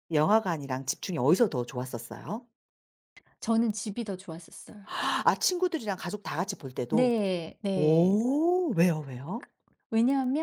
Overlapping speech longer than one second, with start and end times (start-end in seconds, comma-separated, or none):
none